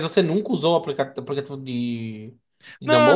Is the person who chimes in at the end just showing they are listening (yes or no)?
no